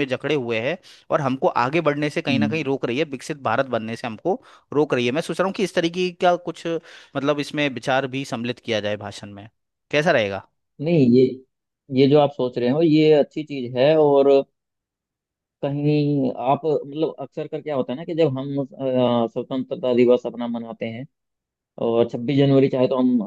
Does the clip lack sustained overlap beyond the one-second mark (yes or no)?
yes